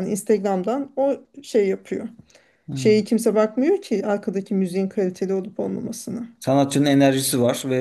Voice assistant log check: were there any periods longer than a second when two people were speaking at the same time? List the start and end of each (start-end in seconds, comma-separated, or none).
none